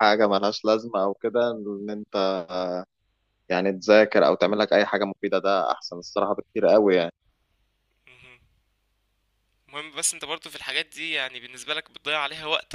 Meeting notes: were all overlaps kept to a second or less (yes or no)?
yes